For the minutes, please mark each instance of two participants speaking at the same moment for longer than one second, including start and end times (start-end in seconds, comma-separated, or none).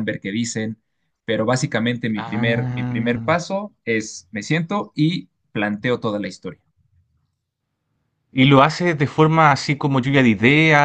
2.1-3.4